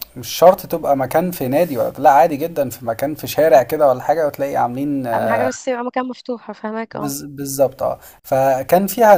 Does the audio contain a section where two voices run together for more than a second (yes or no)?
no